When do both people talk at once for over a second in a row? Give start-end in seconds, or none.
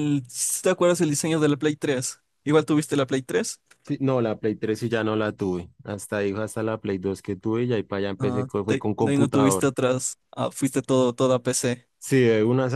8.2-9.7